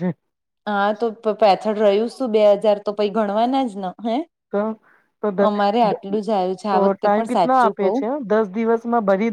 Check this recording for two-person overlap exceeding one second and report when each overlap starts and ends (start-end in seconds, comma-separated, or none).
5.5-8.0